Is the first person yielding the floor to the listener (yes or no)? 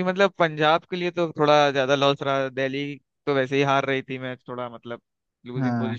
yes